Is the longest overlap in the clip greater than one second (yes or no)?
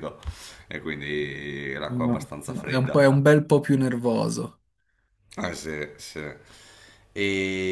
yes